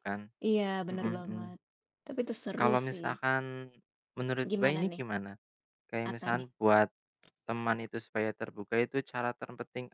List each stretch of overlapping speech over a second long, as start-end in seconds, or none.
none